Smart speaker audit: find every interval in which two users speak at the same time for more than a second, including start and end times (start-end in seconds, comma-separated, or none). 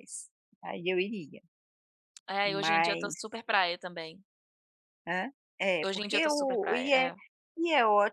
5.8-7.1